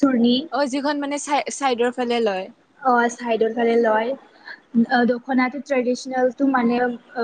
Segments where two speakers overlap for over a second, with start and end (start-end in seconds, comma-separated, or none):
none